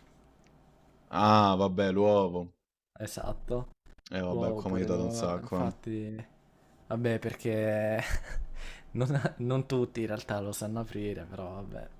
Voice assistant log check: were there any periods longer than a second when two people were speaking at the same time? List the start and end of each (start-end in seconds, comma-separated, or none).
4.3-5.7